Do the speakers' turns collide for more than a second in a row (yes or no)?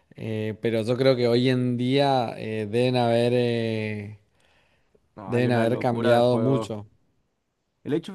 yes